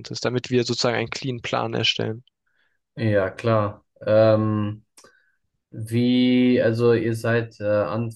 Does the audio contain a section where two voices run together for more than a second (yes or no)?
no